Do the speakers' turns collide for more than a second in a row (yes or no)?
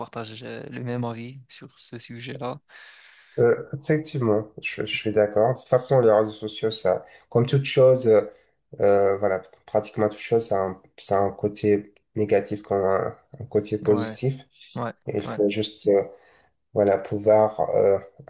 no